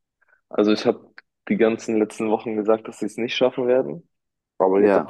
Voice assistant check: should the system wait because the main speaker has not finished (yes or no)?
yes